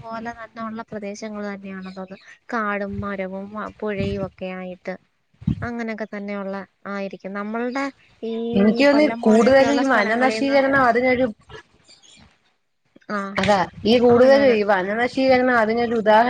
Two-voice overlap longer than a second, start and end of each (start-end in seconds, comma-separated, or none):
8.9-10.6